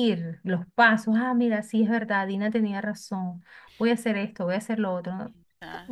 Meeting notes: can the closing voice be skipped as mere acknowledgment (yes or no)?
no